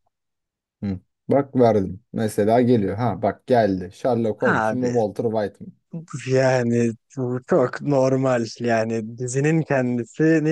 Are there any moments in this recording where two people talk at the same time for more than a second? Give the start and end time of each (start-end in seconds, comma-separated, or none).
none